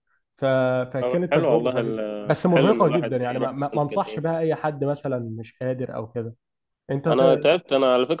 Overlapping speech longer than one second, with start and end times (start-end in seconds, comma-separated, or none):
1.0-4.2